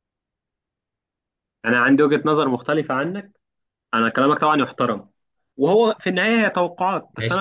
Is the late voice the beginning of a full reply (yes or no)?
no